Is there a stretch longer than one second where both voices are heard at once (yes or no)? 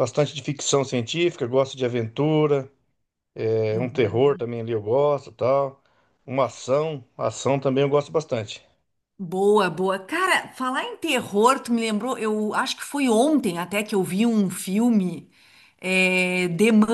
no